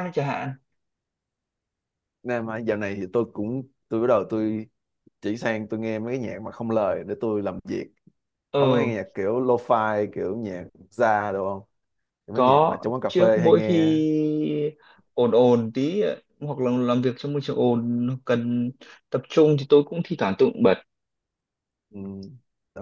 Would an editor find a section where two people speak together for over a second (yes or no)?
yes